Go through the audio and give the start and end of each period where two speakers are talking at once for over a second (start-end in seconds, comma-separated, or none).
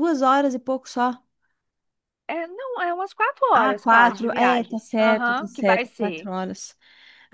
3.5-6.3